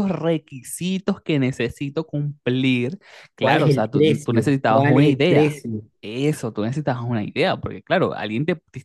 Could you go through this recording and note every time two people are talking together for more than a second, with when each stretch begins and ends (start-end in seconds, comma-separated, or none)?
3.4-5.6